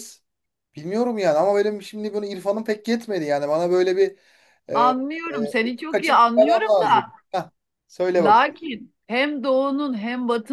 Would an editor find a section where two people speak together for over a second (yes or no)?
yes